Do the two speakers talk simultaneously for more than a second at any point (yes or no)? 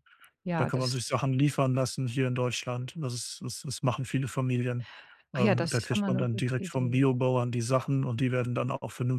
yes